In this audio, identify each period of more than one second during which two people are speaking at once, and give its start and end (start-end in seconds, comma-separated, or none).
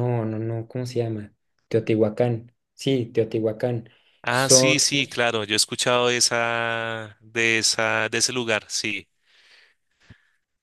none